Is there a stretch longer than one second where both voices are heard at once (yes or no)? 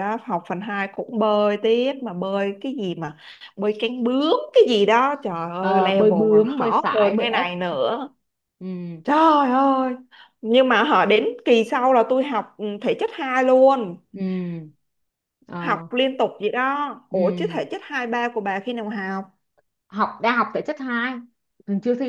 yes